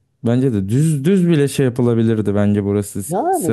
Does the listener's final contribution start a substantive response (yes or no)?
no